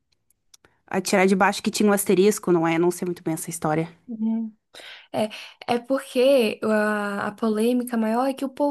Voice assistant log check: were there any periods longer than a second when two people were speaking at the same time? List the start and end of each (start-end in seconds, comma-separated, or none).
none